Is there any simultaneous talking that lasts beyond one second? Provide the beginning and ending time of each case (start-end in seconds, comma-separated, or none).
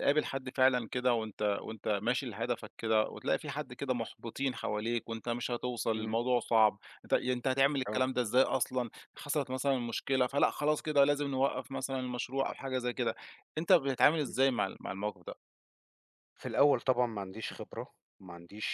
none